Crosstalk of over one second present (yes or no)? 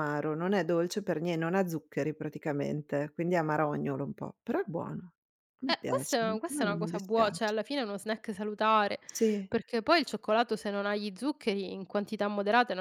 yes